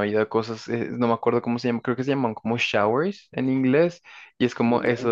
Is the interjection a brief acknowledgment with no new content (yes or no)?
yes